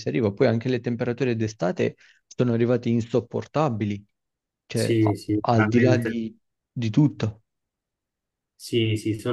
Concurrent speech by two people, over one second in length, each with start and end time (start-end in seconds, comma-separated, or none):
4.7-6.2